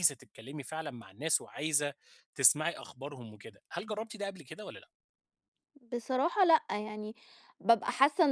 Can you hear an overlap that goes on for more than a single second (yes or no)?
no